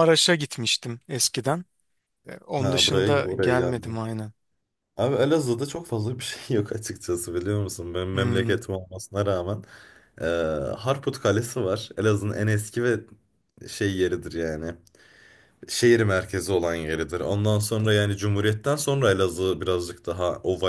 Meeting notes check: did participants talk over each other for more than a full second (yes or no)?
yes